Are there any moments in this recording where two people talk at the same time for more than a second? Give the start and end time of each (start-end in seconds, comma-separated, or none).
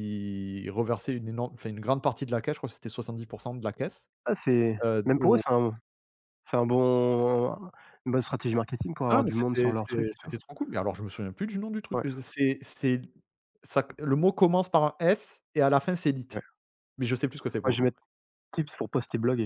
9.1-10.3